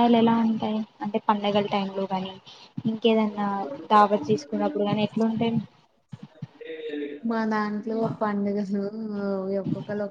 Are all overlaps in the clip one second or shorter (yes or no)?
yes